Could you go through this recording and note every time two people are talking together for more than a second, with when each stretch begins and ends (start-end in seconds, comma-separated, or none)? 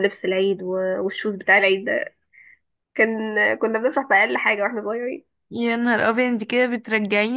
none